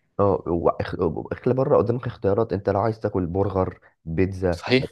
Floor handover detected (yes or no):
no